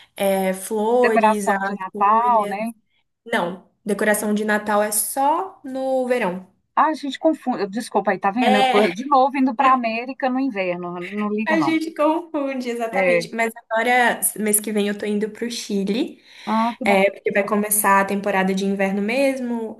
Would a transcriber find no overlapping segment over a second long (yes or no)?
no